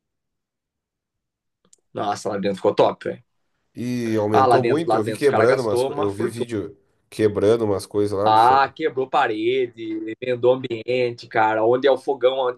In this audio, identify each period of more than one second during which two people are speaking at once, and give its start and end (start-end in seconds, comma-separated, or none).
4.3-6.5